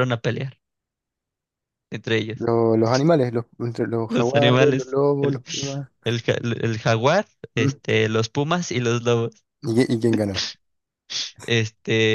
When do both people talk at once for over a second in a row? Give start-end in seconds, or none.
4.1-5.4